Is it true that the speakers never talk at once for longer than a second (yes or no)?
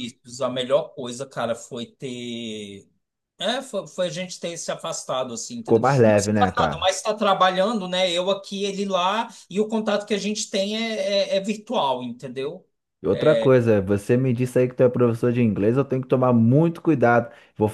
no